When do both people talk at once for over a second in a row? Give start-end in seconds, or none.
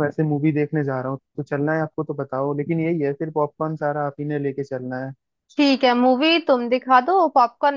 none